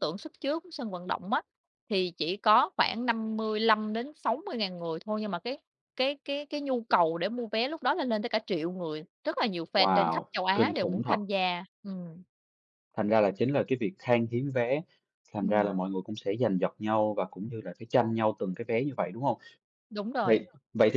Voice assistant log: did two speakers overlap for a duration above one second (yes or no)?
yes